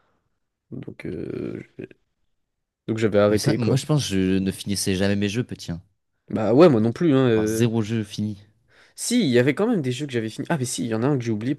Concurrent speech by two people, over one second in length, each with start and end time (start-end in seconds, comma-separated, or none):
none